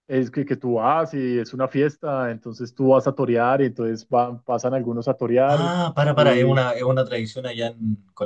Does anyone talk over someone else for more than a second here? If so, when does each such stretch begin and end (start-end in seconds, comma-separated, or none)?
none